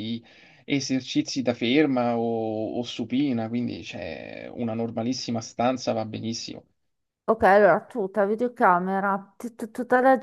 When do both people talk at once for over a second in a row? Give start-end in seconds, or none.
none